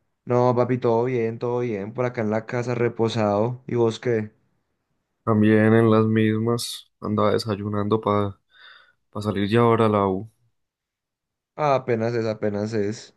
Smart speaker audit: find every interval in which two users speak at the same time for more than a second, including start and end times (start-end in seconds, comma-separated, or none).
none